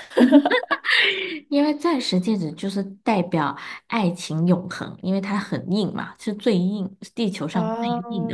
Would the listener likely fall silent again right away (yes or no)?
no